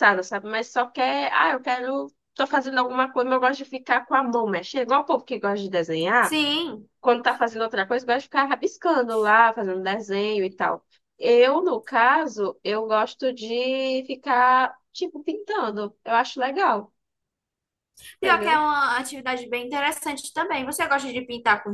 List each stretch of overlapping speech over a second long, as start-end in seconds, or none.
none